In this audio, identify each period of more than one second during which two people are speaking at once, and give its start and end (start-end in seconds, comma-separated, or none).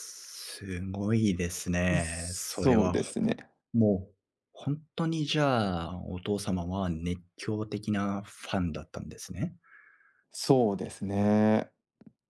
1.9-3.1